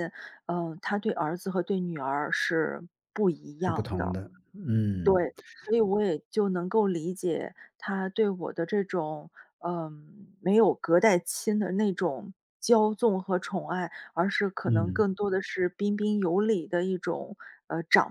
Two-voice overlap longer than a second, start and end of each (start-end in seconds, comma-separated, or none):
none